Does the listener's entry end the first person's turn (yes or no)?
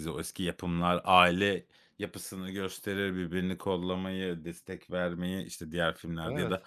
no